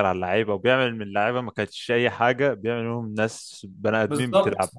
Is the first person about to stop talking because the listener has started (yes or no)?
yes